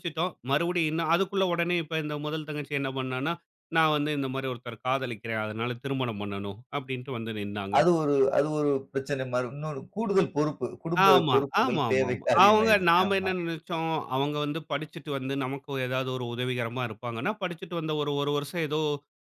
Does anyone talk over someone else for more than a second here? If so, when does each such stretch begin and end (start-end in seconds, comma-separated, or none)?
11.1-13.3